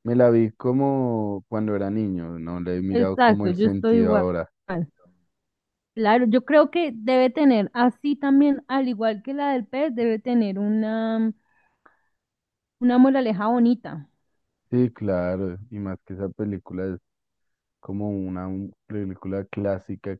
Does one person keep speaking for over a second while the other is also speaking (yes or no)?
yes